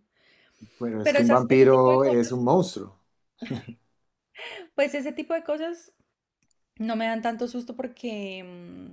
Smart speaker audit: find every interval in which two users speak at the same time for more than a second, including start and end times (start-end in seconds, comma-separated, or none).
1.0-2.5